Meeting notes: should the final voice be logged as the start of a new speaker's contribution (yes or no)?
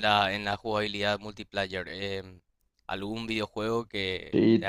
yes